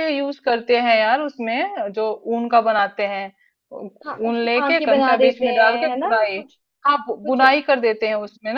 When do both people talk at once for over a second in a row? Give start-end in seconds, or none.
4.3-6.4